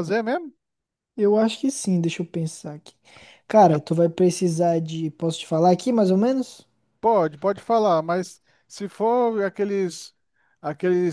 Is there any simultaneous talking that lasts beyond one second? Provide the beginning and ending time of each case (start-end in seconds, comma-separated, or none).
none